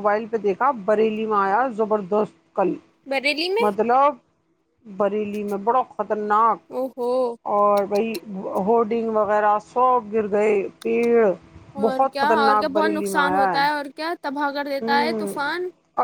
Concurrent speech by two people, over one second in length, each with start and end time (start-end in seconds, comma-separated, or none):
11.8-13.5